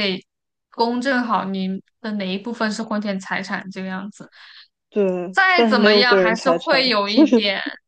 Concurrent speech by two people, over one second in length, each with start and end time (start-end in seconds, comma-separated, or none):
5.3-6.9